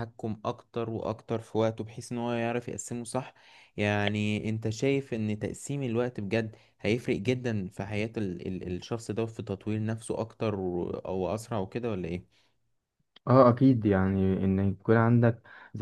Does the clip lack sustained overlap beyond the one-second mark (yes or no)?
yes